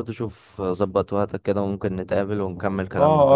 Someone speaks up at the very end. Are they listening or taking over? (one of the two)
taking over